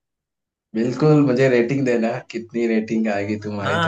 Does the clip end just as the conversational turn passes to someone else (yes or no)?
yes